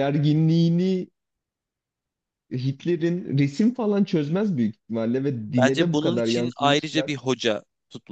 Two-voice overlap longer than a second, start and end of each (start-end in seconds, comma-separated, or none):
5.6-7.1